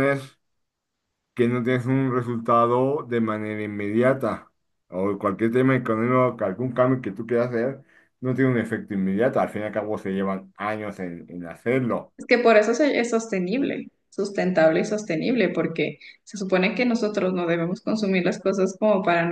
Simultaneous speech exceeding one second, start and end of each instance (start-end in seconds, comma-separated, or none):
none